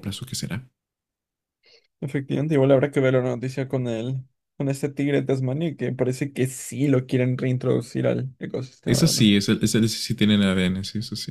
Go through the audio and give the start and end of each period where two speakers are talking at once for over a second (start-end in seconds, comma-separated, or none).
none